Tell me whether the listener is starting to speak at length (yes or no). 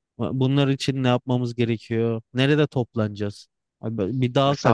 yes